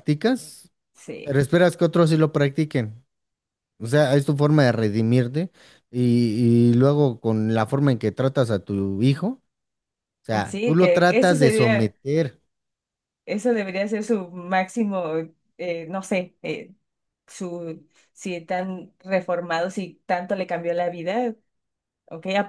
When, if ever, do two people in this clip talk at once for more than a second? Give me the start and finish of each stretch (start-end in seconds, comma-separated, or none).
10.5-11.9